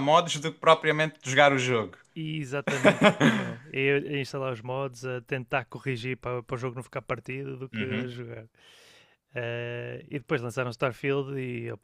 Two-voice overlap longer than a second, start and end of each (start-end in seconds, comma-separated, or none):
none